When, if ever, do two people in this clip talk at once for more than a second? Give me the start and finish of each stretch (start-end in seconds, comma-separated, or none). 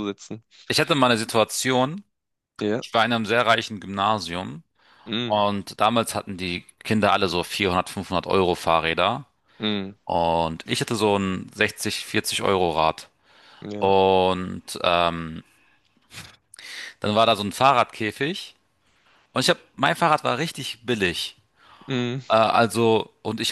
none